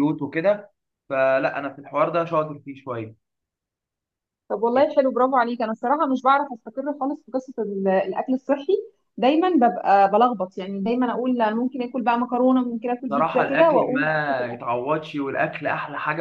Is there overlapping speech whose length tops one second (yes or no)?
yes